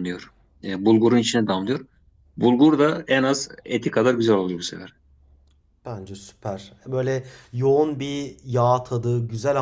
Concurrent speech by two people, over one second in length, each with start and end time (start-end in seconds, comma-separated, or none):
none